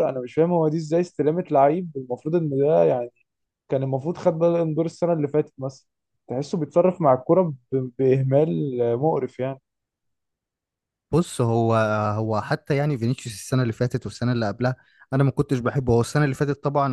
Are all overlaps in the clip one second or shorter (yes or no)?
yes